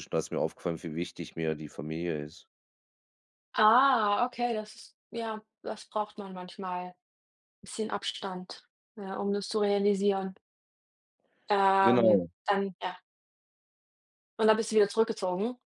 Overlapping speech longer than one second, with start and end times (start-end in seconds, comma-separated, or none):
none